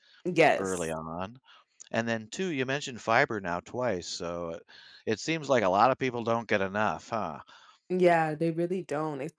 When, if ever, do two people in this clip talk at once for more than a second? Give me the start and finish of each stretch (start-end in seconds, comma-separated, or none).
none